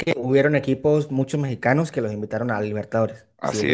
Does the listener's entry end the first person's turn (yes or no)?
yes